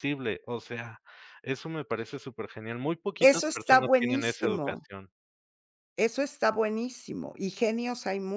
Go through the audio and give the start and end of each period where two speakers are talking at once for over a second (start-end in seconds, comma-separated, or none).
3.2-4.9